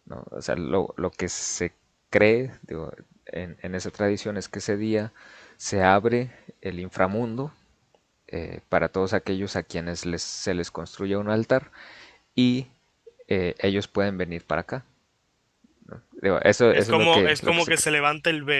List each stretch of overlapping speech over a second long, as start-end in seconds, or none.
16.7-17.9